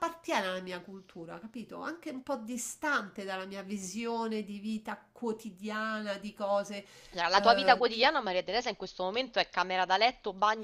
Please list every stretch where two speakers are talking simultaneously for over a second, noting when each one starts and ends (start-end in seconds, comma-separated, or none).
none